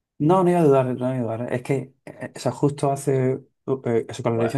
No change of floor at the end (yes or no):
yes